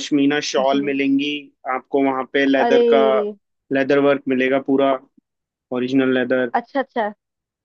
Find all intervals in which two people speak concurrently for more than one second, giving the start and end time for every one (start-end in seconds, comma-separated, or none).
none